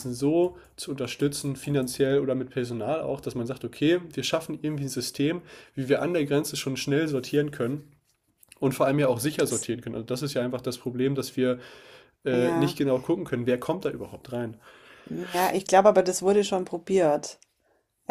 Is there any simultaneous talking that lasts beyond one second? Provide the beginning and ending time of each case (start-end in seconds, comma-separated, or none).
none